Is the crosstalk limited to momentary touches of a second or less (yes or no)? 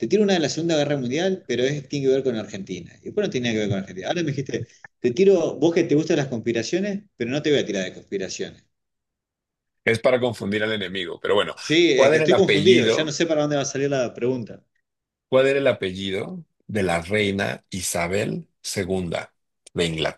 no